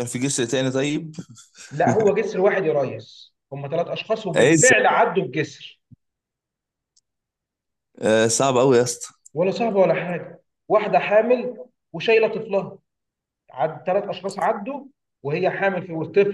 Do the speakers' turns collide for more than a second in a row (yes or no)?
no